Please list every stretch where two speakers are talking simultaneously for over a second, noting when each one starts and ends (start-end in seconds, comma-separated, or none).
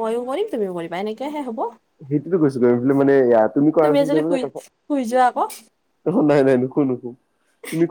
none